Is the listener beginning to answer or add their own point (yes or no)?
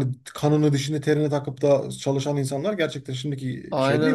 yes